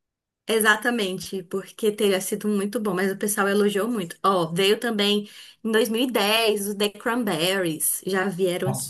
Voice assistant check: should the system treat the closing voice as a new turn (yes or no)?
yes